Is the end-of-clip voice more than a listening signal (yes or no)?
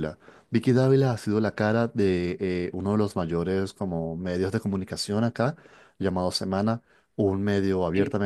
no